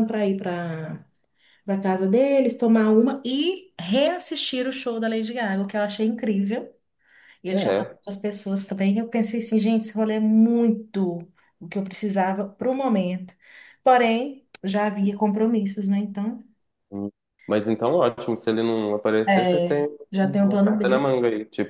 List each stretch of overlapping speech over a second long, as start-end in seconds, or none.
19.3-21.1